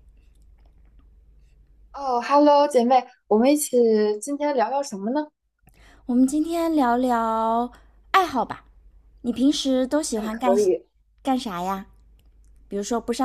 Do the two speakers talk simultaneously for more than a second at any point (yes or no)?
no